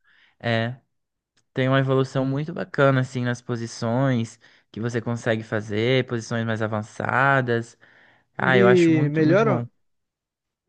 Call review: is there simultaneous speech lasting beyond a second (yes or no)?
yes